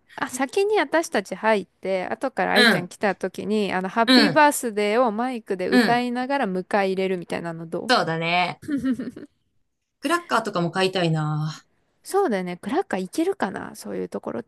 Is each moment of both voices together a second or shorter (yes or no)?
yes